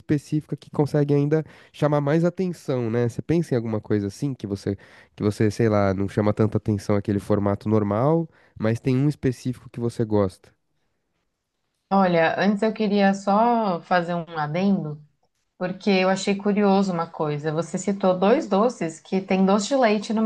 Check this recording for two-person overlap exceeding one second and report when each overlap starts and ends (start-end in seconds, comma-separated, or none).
none